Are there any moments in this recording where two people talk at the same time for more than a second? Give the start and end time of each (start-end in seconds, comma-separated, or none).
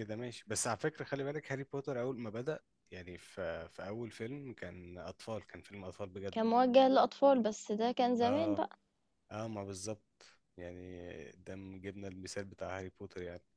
none